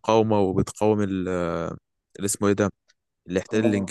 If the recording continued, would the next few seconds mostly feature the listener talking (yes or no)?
no